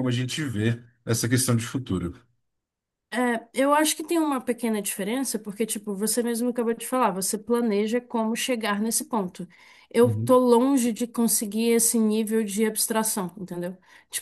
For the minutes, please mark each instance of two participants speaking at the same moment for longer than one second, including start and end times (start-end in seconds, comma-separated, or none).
none